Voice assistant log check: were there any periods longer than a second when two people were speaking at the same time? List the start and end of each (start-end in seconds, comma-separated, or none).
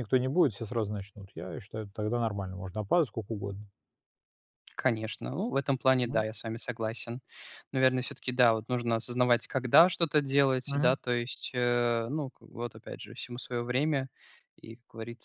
none